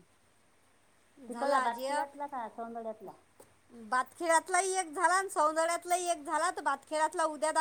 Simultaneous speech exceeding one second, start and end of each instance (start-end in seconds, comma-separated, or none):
none